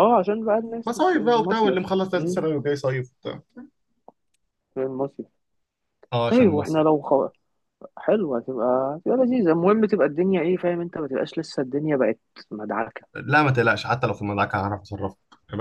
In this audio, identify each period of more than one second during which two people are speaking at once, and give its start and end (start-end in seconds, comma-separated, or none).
0.9-2.4